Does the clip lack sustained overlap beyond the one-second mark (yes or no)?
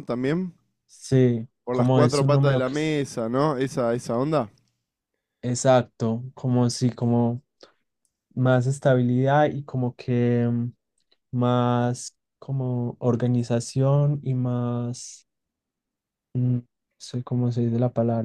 no